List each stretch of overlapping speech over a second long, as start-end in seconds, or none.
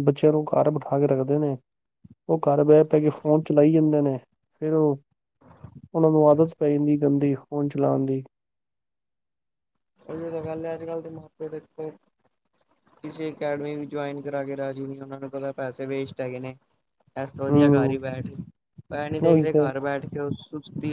none